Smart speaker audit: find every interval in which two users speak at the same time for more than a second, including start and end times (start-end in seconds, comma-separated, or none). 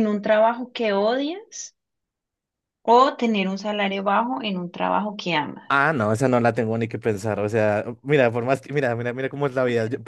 none